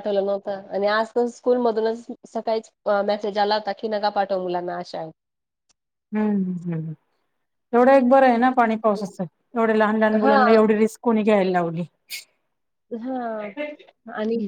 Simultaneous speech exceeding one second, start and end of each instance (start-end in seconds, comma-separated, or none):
none